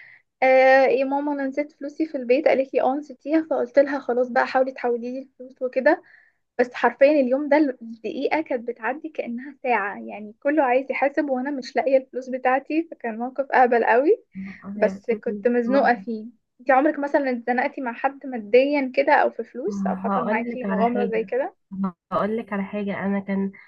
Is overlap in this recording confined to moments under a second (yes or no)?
no